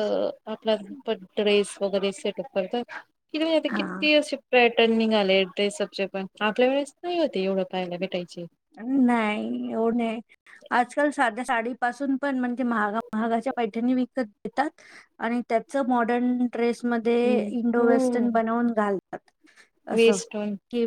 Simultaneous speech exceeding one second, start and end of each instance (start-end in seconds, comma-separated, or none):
none